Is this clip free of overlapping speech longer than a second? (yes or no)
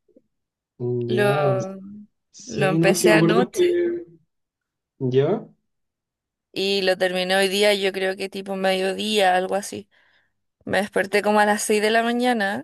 no